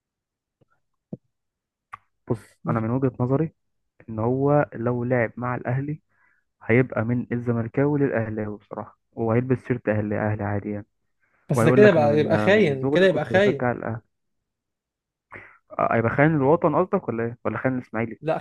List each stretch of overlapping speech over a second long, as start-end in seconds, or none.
11.5-13.7